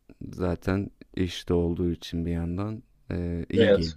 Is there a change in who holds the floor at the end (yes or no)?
yes